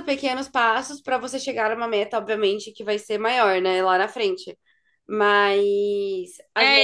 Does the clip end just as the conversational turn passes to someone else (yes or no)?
yes